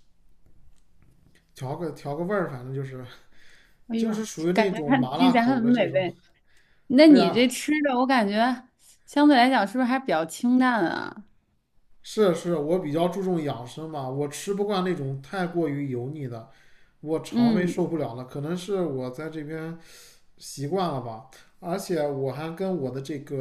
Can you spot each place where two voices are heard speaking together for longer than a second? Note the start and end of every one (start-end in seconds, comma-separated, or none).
4.0-6.1